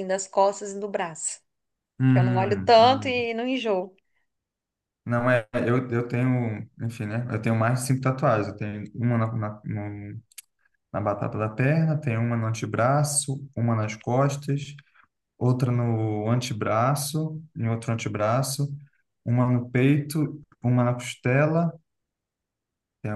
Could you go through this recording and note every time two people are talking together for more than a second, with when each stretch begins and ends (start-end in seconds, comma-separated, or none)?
2.1-3.3